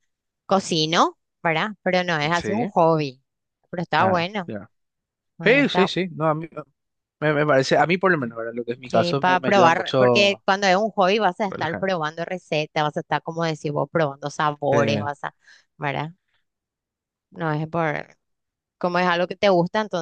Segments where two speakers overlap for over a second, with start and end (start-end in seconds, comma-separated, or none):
8.9-10.4